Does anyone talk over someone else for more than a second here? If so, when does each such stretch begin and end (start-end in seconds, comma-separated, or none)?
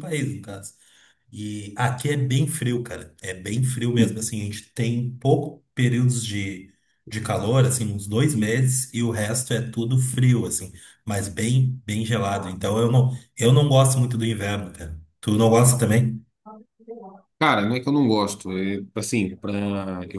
none